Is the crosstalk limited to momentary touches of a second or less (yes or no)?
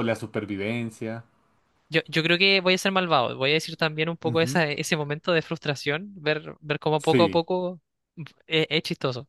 yes